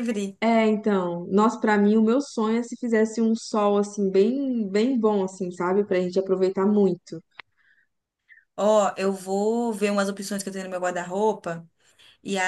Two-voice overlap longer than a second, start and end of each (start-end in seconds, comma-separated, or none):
none